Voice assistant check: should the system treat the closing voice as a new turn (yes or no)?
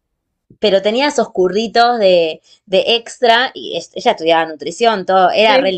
no